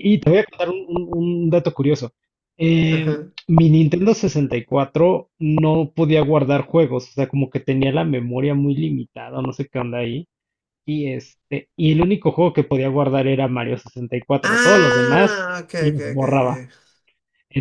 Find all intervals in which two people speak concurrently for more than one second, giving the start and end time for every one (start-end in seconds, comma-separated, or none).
14.4-16.6